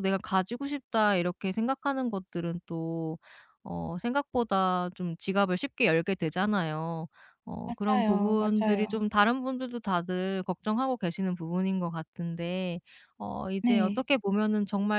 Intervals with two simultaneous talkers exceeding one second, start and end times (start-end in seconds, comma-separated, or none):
7.7-9.1